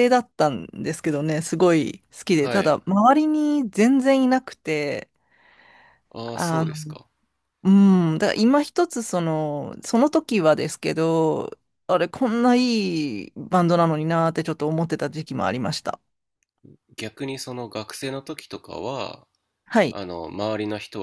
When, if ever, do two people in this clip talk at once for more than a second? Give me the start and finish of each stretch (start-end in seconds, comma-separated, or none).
none